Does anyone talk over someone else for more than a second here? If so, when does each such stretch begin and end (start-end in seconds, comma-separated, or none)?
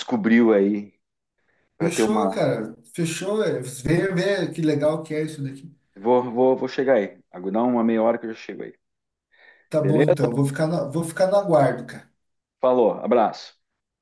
none